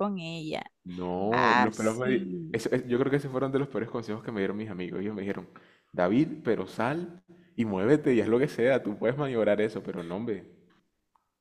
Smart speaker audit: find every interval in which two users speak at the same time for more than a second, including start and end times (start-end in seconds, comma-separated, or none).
1.3-2.6